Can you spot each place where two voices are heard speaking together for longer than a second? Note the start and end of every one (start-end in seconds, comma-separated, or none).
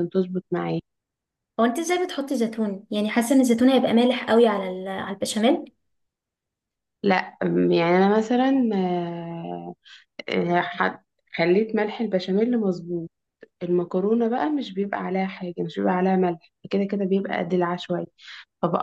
none